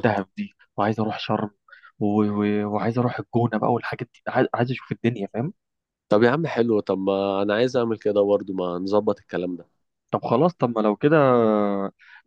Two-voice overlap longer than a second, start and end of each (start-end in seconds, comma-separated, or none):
none